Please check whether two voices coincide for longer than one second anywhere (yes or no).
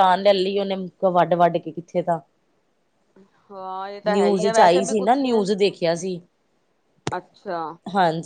yes